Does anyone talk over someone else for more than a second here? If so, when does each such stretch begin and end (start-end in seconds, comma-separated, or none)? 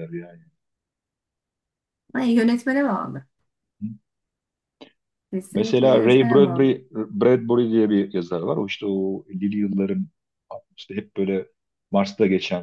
5.5-6.8